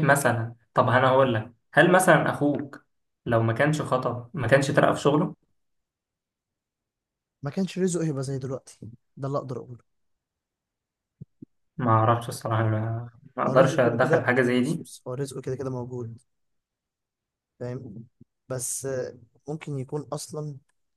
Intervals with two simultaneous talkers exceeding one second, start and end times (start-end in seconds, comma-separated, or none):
13.5-14.9